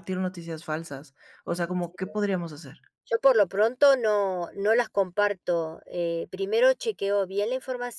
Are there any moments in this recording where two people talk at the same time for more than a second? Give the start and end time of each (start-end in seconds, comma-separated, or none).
none